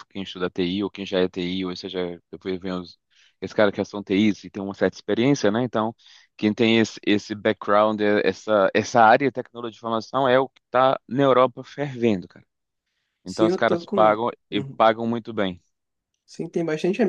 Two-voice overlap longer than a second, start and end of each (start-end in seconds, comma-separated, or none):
13.2-14.8